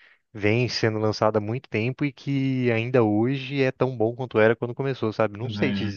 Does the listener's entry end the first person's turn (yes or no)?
yes